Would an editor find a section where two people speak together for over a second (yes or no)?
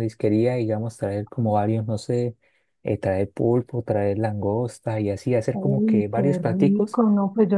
yes